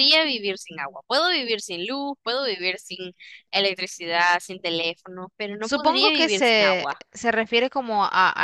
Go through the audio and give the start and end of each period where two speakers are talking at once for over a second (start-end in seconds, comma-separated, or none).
5.6-7.0